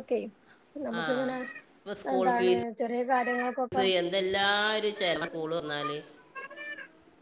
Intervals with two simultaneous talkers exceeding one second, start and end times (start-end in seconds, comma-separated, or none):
2.2-3.8